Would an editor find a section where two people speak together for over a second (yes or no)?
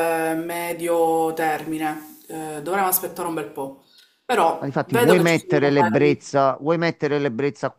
yes